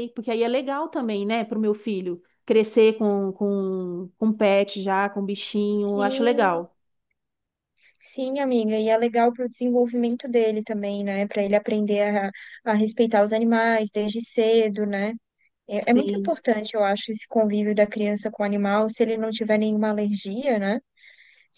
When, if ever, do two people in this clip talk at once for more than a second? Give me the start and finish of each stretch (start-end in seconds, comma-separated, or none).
5.3-6.6